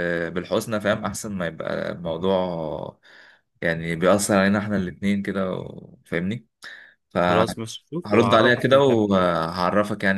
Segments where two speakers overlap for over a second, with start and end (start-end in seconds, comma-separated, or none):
7.3-9.3